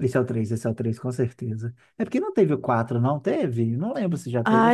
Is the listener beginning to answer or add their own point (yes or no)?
yes